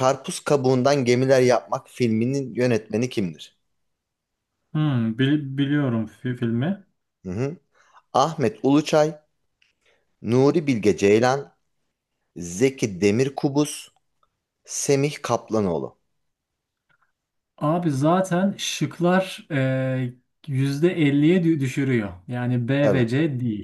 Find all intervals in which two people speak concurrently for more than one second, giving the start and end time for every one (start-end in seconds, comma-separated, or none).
none